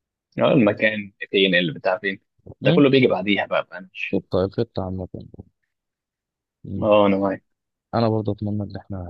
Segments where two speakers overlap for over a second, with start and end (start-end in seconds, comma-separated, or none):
none